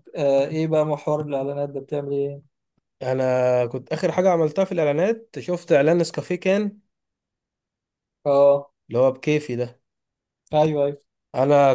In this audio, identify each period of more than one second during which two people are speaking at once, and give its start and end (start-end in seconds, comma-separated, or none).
none